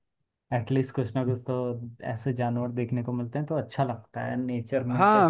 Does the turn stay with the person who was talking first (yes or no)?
no